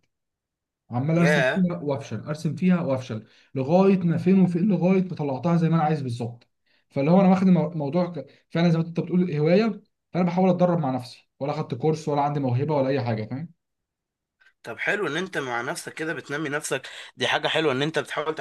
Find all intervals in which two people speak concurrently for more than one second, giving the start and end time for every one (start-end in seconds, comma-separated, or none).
none